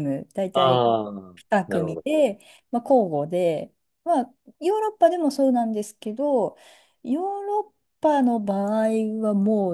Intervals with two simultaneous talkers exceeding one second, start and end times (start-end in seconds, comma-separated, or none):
none